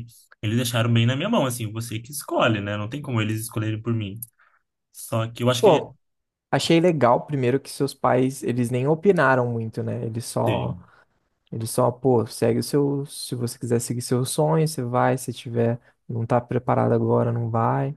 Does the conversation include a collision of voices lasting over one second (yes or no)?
no